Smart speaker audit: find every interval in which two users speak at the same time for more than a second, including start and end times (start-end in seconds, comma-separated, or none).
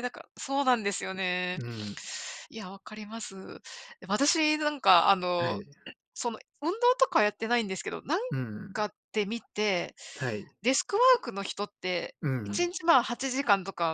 none